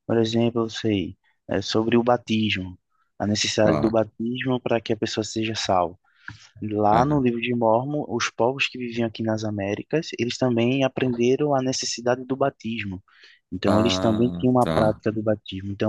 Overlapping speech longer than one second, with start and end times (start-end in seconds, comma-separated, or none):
13.7-15.0